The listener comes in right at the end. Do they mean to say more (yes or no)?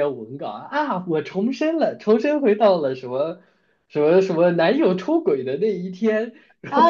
yes